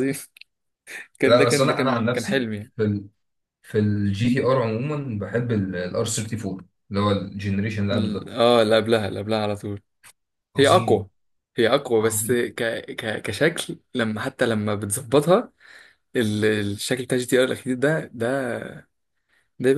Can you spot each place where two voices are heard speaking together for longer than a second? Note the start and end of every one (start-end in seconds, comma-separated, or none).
1.2-2.7